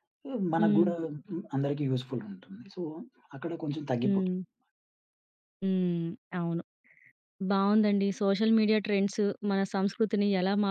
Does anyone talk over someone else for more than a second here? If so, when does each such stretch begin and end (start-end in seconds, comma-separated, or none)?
none